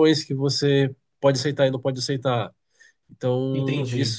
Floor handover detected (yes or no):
no